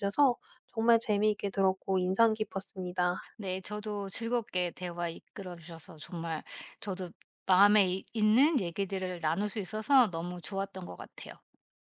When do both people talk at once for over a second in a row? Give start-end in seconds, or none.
none